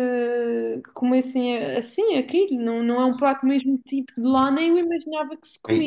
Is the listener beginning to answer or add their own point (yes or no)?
yes